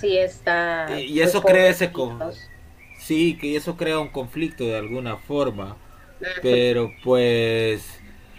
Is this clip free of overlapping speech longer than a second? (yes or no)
no